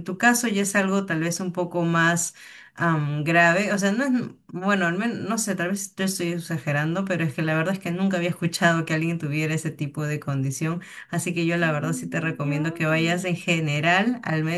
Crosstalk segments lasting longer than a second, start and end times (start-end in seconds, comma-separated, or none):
11.6-13.3